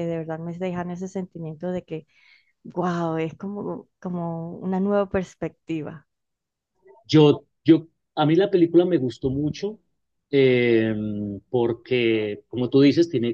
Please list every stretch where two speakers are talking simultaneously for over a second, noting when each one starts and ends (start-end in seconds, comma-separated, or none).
none